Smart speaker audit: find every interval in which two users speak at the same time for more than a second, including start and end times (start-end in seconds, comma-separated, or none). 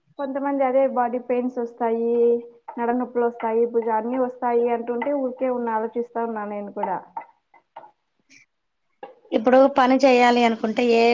none